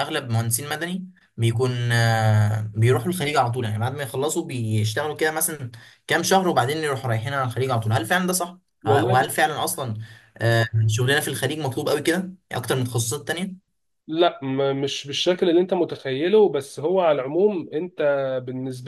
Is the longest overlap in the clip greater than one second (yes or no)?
no